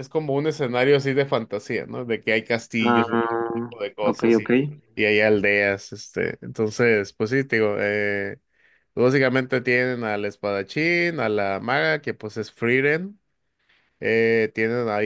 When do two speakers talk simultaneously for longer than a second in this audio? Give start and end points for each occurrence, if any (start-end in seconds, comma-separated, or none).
2.8-4.5